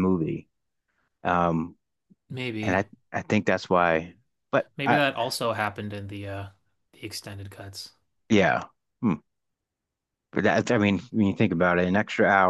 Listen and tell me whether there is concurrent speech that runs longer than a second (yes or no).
no